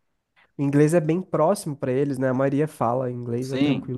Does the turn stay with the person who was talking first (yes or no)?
no